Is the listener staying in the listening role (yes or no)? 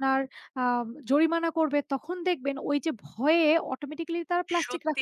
no